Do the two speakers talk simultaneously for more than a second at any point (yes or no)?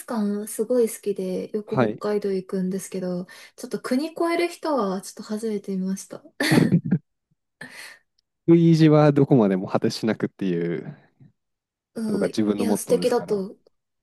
yes